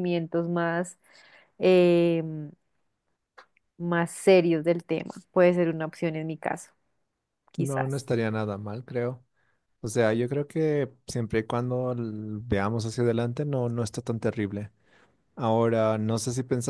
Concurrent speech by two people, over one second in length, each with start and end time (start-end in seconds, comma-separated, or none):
none